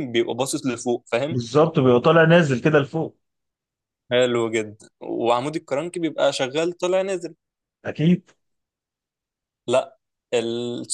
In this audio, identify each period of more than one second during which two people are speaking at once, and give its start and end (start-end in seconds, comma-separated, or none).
none